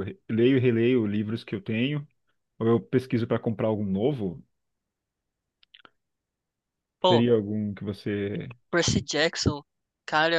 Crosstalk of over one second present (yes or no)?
no